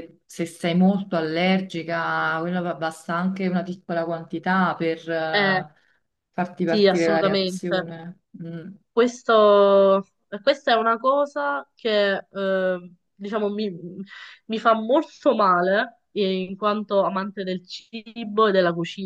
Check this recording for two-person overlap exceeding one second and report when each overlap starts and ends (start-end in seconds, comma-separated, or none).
6.6-7.9